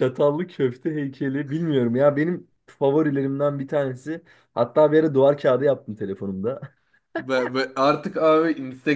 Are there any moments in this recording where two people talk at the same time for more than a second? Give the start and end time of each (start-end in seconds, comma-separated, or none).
none